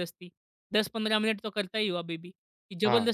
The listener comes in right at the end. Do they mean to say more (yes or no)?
yes